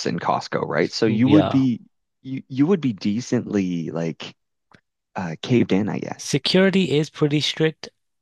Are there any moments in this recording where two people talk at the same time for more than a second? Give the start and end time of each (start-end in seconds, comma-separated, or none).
none